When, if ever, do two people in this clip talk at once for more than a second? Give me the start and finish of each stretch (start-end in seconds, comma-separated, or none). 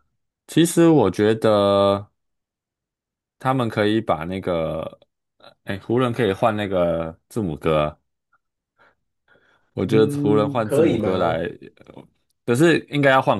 9.8-11.4